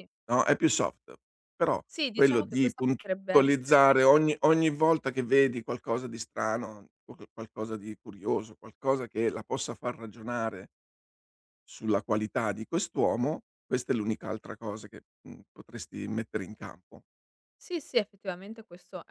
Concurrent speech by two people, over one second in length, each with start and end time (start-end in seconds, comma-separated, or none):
1.9-3.9